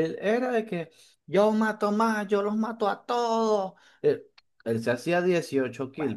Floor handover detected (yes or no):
no